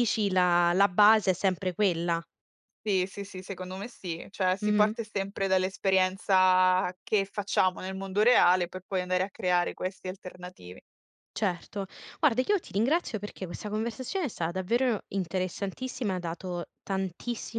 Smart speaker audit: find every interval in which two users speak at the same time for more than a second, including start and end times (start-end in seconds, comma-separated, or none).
none